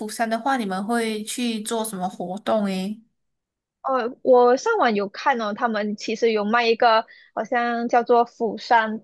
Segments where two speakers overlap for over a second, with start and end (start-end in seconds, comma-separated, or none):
none